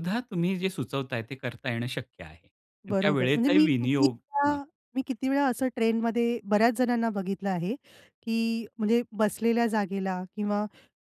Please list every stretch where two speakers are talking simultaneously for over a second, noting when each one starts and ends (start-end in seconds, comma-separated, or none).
2.9-4.6